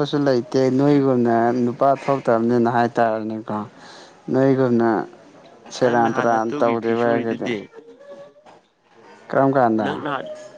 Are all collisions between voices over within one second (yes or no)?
no